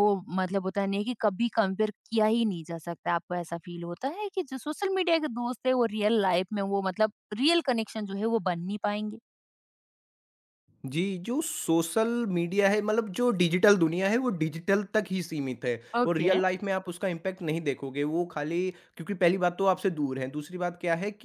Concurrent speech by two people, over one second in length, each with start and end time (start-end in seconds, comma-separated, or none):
none